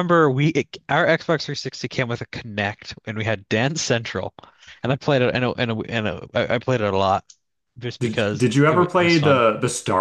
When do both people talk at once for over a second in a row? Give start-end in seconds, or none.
8.0-9.4